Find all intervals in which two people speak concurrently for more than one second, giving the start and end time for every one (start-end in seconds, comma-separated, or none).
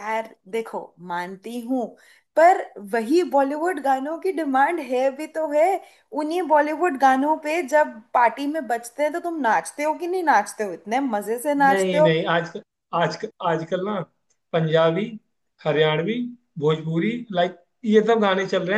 none